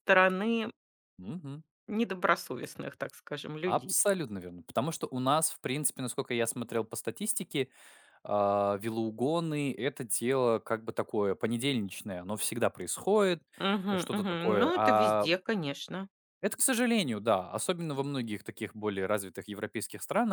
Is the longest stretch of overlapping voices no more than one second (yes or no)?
no